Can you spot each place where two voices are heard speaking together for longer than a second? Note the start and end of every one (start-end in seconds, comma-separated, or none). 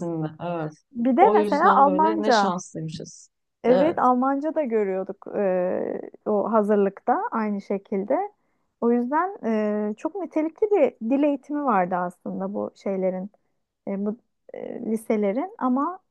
1.2-2.5